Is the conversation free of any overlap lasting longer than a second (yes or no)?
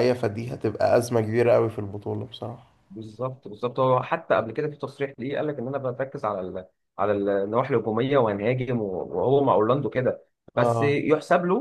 yes